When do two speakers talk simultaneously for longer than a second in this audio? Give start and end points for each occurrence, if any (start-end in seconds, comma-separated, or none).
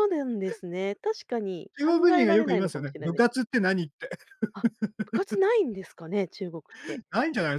1.8-3.3